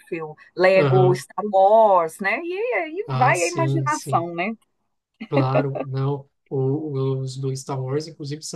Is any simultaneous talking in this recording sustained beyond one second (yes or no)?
yes